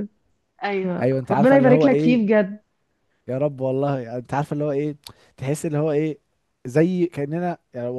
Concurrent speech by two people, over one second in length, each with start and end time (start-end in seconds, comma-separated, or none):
1.0-2.2